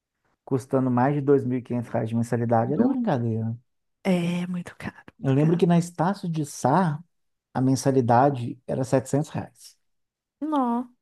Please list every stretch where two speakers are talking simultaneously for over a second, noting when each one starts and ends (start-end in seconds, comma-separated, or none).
none